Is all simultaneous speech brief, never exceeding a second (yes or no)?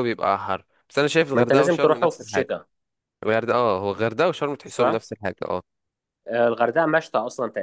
no